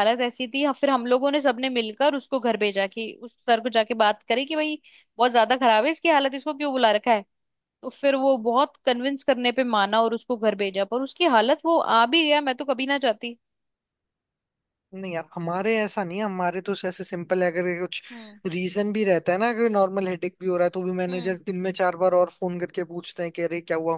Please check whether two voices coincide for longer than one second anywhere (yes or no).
no